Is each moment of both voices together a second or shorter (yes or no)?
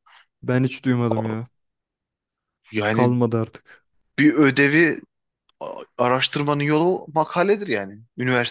yes